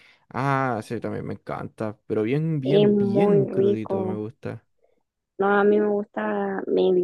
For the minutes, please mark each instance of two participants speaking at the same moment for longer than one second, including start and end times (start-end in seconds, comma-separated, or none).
2.6-4.2